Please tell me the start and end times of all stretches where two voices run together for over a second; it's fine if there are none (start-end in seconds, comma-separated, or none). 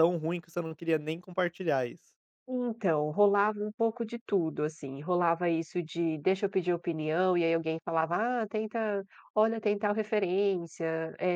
none